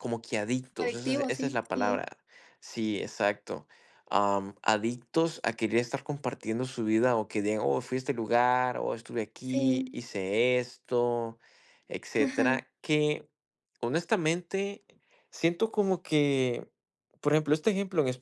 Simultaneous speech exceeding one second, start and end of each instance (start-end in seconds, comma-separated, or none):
0.8-2.1